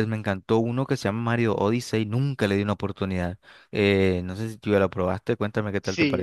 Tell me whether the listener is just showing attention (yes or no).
no